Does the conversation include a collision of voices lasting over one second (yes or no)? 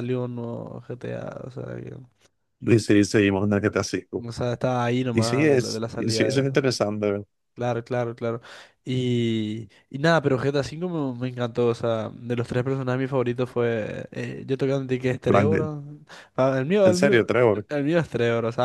yes